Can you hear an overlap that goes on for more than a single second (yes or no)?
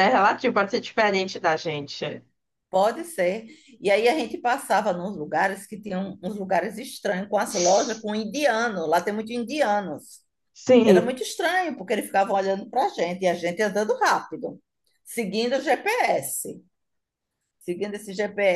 no